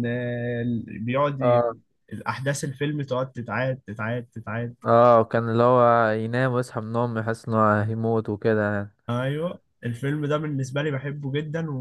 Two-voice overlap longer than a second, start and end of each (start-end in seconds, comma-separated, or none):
none